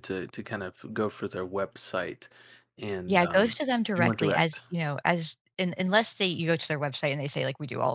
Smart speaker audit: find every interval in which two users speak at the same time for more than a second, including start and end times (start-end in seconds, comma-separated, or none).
3.1-4.6